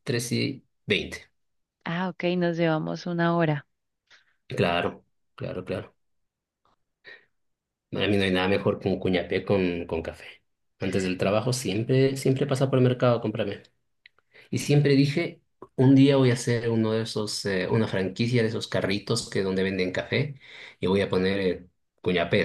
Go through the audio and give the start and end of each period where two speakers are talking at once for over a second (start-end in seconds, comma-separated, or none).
none